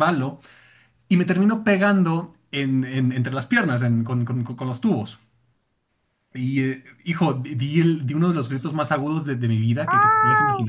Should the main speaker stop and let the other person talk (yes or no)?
yes